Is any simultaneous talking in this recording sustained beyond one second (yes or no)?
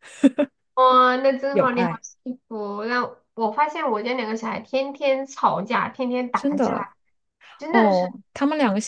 no